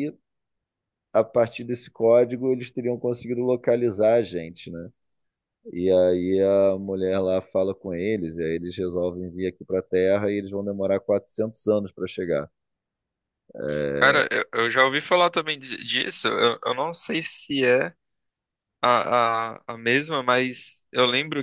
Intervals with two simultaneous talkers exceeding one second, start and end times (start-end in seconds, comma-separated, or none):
none